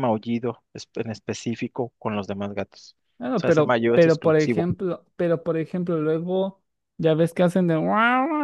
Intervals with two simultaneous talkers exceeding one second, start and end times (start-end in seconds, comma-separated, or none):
3.4-4.7